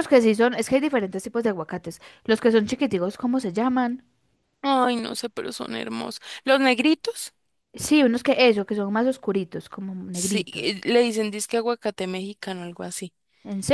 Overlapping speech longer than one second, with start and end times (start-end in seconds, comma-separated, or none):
none